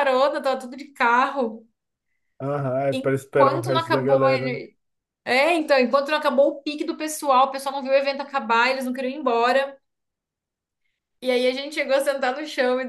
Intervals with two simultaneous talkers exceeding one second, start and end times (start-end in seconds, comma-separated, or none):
2.9-4.2